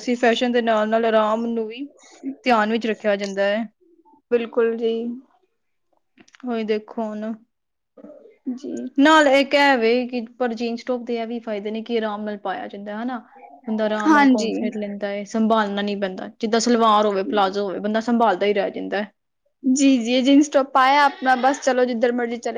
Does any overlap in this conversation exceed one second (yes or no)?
no